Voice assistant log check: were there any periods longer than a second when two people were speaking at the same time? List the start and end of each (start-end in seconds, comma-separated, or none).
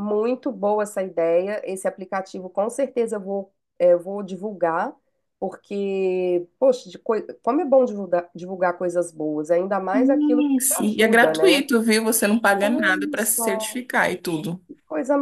9.9-11.7, 12.6-13.8